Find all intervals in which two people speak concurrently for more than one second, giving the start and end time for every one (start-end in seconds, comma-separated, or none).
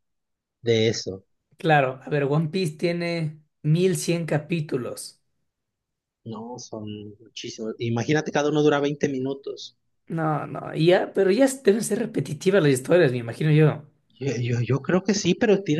none